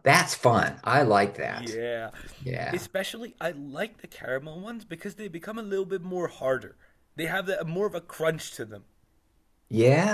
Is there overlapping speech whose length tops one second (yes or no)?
no